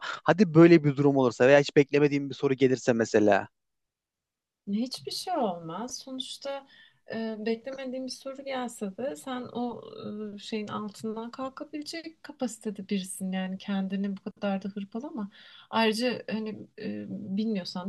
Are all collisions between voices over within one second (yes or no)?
yes